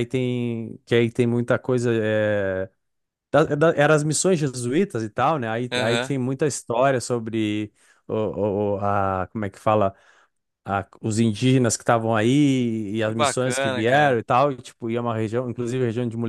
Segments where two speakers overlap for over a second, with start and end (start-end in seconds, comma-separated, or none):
13.0-14.2